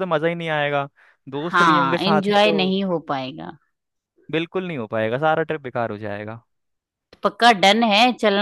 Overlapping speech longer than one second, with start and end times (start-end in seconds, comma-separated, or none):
1.5-2.8